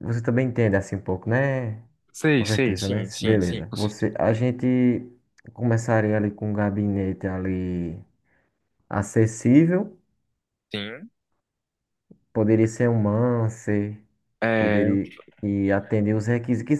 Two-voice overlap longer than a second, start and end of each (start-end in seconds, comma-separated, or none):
2.4-4.1